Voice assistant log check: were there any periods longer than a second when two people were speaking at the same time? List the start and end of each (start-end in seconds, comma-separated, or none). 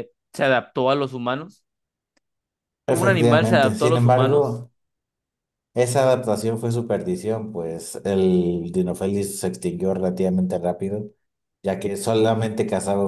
2.9-4.6